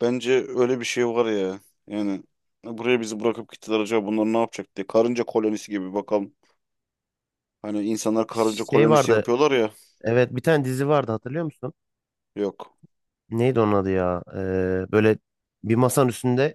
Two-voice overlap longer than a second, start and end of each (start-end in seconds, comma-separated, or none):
none